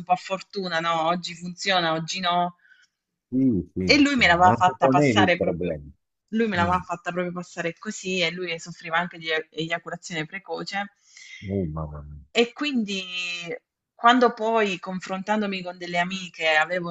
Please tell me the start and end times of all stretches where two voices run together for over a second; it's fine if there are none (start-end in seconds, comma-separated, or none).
3.9-5.8